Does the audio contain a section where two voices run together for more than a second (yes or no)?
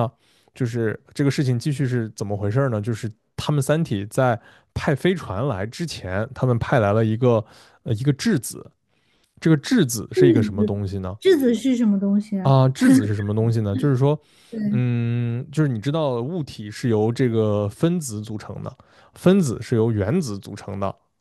no